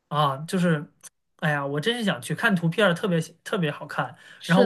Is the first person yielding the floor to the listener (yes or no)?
no